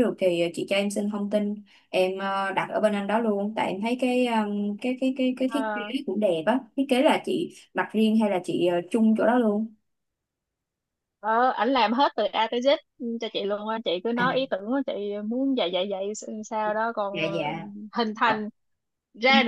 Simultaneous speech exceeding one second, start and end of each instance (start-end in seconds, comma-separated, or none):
none